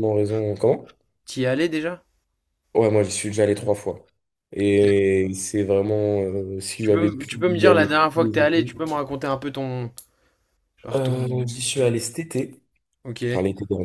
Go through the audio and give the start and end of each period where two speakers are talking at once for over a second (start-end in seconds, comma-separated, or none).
6.8-8.8